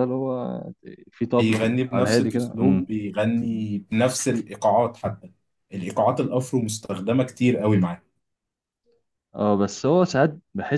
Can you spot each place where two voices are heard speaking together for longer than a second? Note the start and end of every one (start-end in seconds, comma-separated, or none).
1.4-2.9